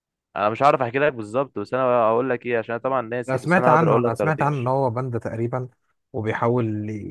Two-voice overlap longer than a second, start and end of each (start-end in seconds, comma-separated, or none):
3.3-4.7